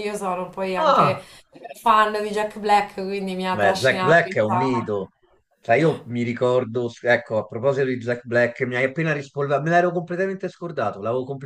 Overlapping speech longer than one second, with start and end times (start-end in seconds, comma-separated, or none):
3.5-4.9